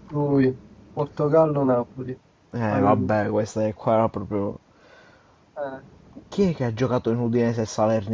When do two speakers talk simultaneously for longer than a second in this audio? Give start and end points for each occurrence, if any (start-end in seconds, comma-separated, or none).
none